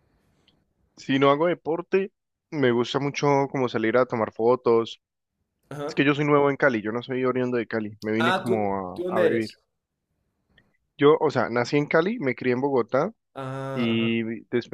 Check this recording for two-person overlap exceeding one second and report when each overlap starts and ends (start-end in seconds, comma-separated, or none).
8.2-9.5